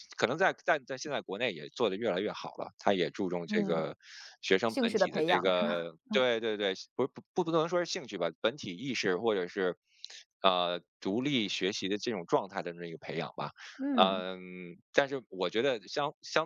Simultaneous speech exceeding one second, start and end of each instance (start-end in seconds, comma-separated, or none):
4.7-5.9